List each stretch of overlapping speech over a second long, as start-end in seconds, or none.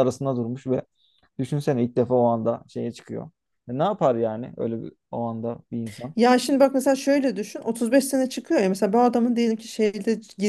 none